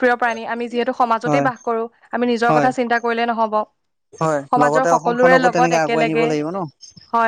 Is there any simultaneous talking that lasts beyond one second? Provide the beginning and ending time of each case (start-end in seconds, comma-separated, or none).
4.5-6.3